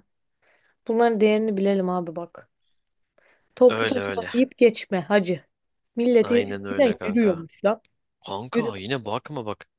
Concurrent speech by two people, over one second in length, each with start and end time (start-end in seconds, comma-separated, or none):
6.2-7.4